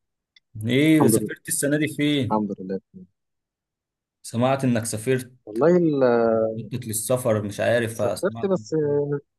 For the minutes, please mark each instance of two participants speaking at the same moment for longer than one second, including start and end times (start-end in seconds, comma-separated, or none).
none